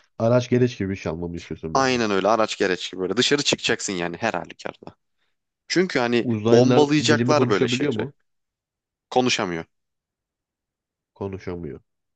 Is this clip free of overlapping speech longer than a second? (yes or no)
no